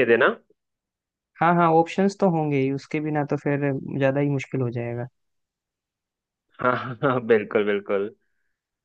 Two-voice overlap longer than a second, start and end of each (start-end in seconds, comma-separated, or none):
none